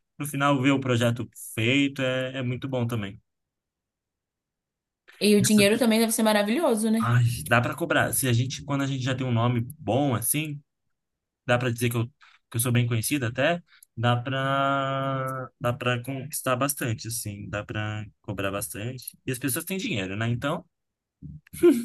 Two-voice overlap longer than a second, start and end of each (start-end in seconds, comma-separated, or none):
none